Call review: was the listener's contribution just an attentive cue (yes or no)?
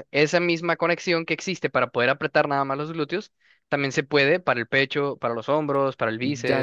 no